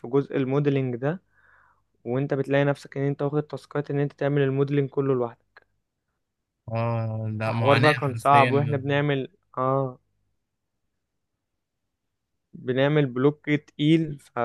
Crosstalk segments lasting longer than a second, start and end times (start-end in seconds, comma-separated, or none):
7.4-8.8